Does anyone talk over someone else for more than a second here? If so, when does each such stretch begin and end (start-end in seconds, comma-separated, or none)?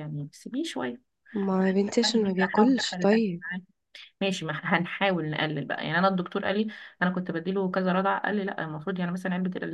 2.0-3.4